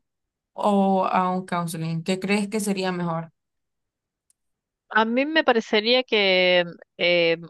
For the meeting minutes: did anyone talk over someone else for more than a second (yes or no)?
no